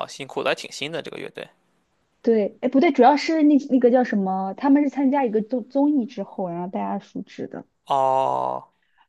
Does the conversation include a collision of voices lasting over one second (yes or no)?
no